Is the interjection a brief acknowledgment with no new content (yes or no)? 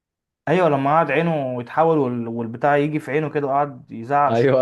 no